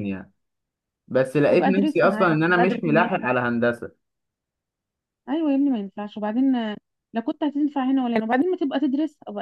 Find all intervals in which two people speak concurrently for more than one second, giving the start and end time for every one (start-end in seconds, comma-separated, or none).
1.5-2.9